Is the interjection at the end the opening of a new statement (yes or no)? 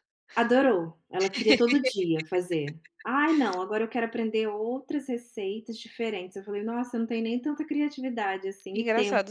yes